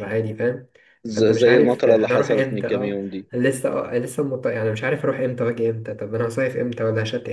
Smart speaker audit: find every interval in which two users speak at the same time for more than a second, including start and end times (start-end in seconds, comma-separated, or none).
1.1-2.9